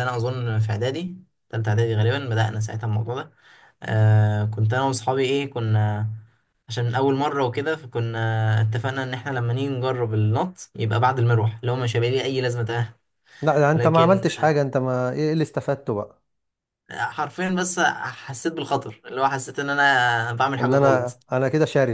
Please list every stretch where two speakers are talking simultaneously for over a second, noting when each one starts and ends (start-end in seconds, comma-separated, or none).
none